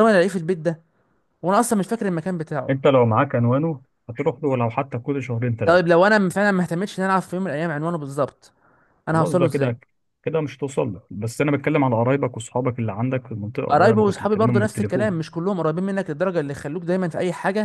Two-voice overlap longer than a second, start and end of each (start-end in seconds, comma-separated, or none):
13.7-15.2